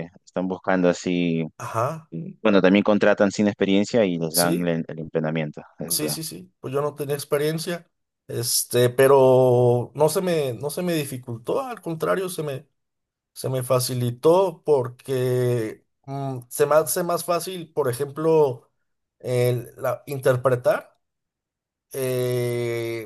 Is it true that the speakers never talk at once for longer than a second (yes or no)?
yes